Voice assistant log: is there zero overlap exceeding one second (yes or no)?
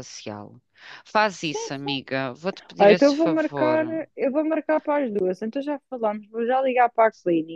no